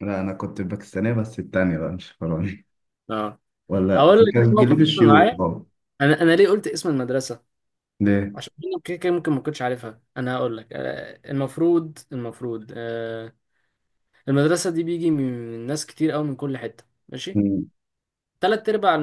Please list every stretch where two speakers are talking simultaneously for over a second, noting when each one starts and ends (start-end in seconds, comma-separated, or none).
3.9-5.4